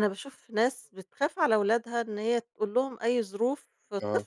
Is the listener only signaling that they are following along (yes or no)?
yes